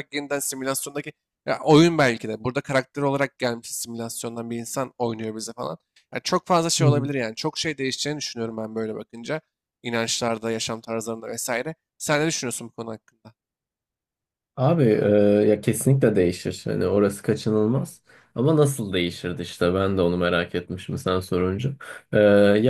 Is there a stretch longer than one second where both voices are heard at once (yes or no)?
no